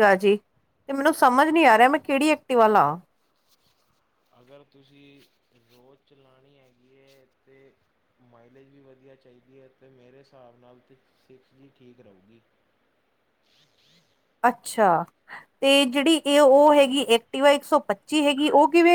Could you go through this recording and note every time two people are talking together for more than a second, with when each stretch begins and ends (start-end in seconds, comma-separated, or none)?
none